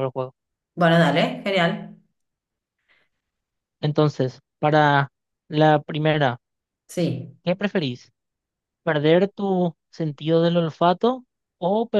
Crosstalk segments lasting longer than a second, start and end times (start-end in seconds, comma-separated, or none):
none